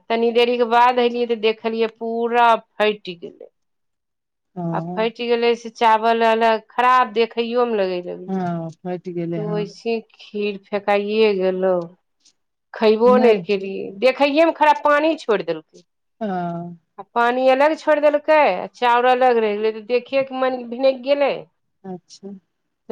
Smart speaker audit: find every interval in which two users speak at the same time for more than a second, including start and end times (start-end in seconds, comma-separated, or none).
8.3-9.6